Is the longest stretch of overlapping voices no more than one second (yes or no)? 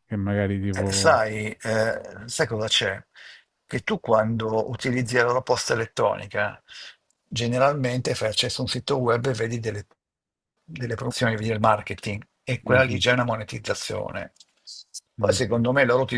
yes